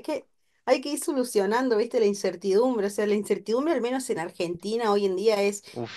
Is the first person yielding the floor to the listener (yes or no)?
no